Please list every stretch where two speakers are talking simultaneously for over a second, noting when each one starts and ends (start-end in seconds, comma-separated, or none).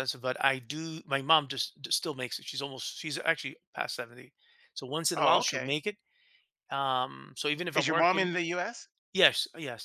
none